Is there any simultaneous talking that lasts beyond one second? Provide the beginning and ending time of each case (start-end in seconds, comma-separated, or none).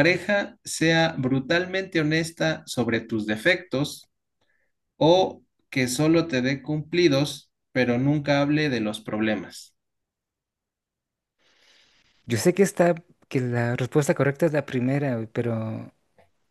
none